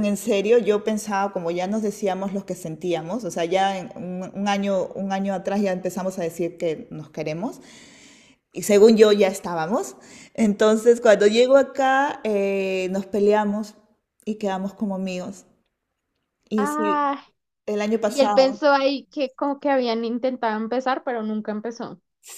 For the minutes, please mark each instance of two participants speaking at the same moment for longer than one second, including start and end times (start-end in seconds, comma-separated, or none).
none